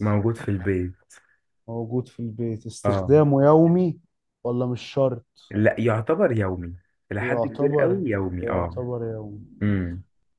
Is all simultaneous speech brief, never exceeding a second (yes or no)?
no